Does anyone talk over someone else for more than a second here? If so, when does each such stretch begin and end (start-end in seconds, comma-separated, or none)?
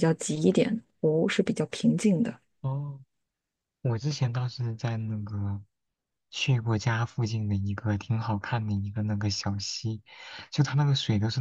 none